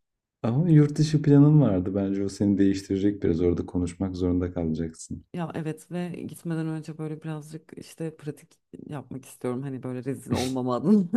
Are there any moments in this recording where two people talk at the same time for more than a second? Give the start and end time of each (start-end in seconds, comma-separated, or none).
none